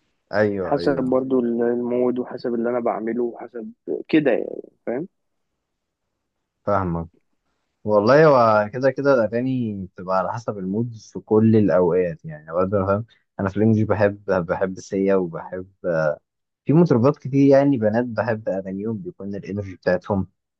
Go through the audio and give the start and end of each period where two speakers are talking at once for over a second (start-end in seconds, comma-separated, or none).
none